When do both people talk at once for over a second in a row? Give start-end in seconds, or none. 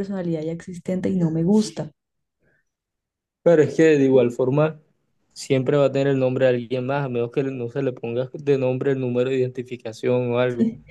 none